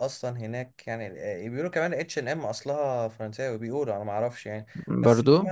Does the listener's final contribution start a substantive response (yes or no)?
no